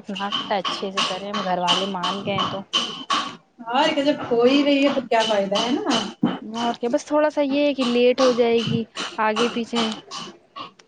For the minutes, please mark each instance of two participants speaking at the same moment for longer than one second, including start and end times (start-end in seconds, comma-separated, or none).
none